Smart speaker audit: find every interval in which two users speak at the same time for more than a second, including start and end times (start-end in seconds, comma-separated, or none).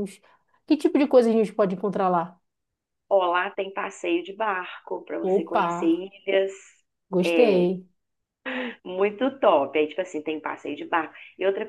none